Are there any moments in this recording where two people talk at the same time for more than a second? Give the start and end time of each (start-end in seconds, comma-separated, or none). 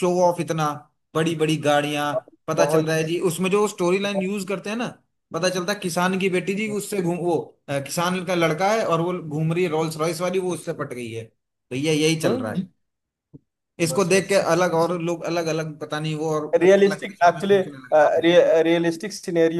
16.6-18.3